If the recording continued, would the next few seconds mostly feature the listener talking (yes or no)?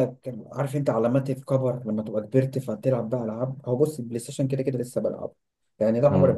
no